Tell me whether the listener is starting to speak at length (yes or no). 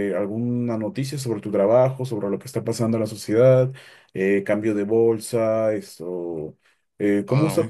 no